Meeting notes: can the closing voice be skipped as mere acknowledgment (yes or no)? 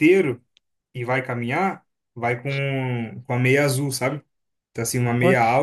yes